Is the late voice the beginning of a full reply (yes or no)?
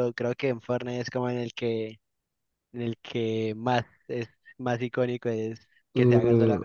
yes